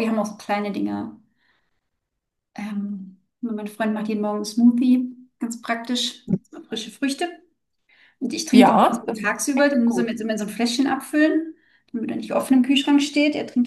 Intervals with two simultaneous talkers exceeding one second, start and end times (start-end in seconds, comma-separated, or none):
8.5-10.2